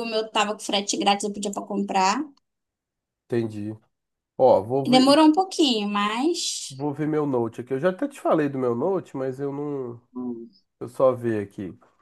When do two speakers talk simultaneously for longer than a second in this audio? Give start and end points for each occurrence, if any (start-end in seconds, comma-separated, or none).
none